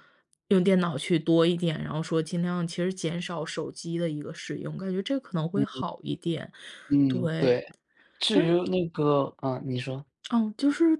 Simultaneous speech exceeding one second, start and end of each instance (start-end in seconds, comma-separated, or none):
none